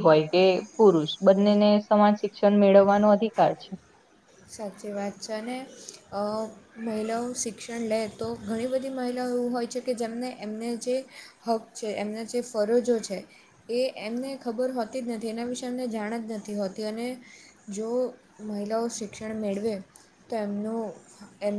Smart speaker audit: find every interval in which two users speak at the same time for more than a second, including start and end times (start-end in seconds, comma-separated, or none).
none